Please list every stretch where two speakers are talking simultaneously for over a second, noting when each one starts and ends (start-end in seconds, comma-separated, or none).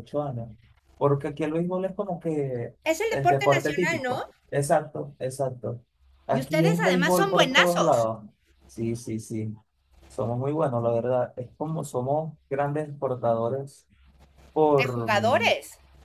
2.8-4.3, 6.3-8.1